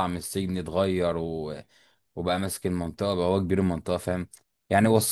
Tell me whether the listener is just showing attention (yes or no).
yes